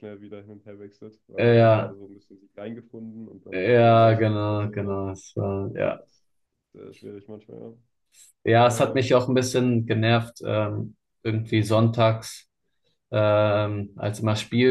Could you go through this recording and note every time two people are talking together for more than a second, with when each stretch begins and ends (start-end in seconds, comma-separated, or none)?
3.5-5.0